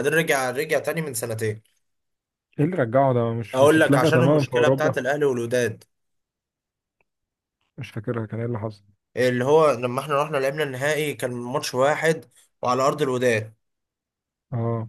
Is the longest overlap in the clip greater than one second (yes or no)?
yes